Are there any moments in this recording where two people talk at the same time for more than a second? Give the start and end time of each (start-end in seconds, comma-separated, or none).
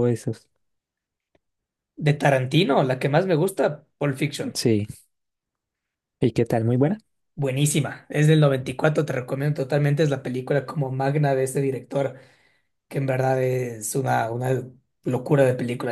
none